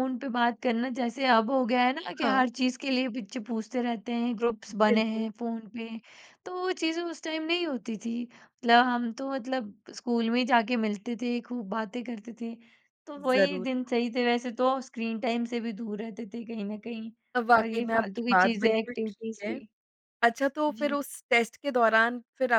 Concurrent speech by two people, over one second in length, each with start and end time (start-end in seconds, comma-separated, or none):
17.6-19.6